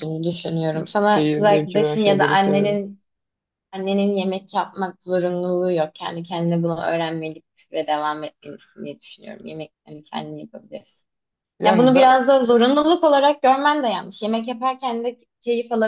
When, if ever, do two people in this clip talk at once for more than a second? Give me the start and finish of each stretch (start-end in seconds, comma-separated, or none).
0.9-2.8